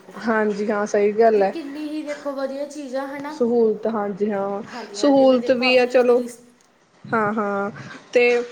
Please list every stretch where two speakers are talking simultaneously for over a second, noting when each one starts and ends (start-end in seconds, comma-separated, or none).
4.7-6.2